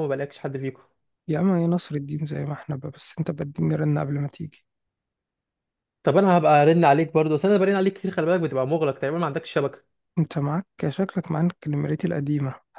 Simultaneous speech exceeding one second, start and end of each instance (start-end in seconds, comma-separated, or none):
none